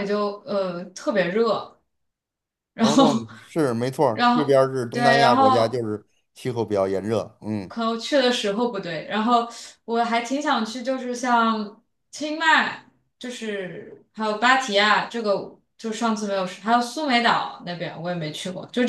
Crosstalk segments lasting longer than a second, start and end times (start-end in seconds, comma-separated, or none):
4.1-5.9